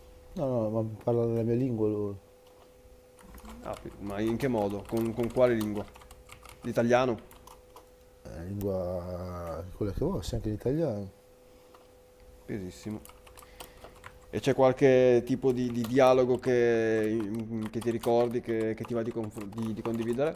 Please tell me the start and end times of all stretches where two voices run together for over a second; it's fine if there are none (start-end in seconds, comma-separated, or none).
none